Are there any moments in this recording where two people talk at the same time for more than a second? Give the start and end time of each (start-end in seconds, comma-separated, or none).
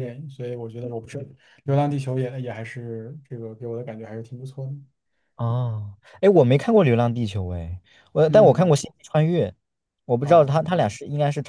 none